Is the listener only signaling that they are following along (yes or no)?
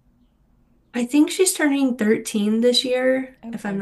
yes